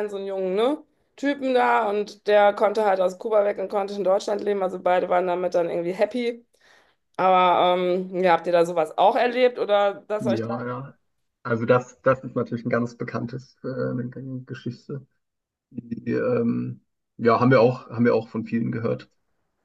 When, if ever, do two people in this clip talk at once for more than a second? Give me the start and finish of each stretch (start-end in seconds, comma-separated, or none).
none